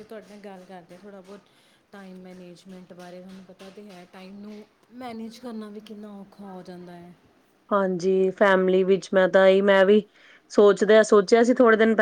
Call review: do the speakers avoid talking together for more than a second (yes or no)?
yes